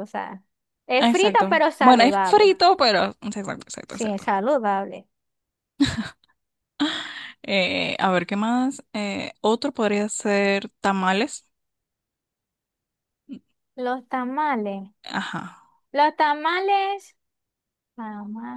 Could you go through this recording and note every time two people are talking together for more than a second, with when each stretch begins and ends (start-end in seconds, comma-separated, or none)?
1.0-2.6